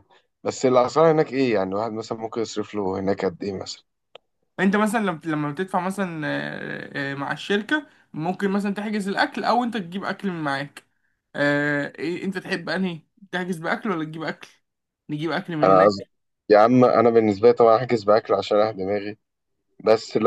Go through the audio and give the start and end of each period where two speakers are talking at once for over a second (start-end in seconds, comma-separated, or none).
none